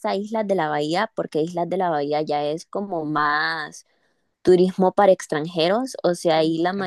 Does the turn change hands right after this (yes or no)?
no